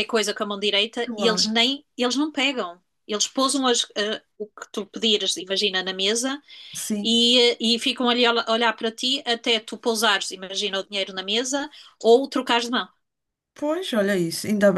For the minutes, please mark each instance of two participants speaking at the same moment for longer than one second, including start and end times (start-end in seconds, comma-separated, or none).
none